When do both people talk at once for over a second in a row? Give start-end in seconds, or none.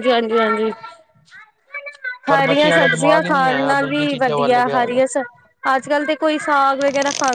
2.3-5.0